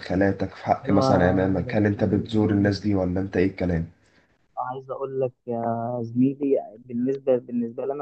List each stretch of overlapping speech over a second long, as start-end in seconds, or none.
none